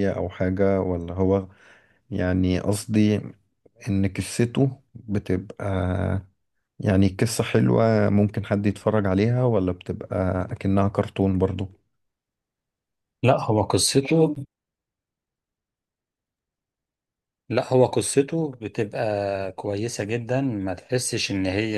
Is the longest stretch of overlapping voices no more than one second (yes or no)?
yes